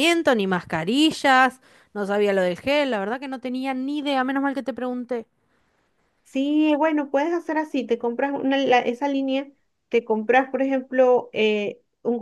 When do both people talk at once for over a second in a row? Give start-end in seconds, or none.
none